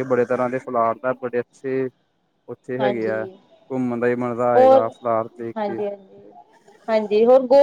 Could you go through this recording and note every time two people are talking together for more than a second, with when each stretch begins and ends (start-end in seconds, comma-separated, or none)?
none